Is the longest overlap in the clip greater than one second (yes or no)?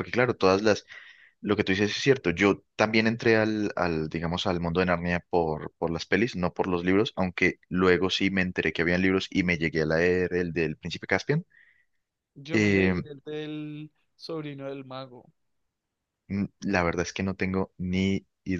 no